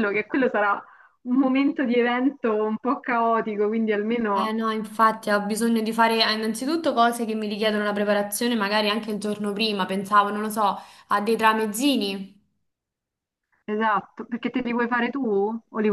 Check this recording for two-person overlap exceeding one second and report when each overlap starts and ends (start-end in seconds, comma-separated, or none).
none